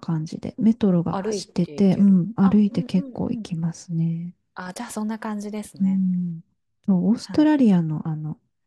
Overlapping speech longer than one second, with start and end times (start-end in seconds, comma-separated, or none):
1.1-3.4